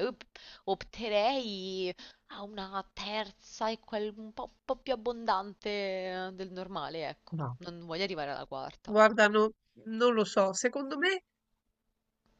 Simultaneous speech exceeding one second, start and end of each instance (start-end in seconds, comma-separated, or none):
none